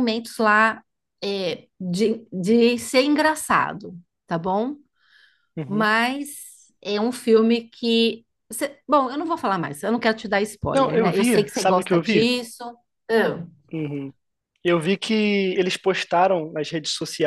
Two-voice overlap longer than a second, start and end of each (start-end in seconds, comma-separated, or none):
10.7-12.3